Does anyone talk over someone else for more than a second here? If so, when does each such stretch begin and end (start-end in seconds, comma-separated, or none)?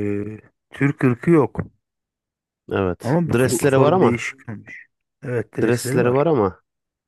3.0-4.2